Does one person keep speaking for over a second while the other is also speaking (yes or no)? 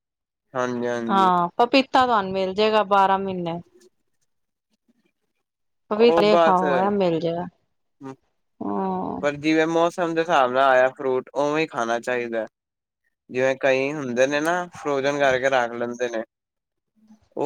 no